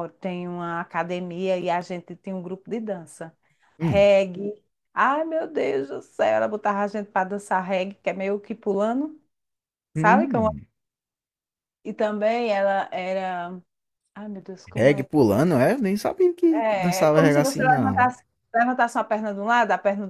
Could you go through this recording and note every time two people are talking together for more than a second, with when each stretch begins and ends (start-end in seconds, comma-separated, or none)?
16.5-18.1